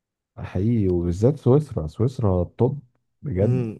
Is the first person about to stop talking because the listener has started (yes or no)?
yes